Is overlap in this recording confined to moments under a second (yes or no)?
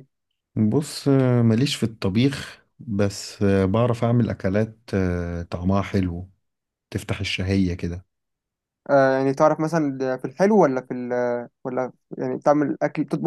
yes